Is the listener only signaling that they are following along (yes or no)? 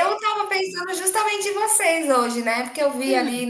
yes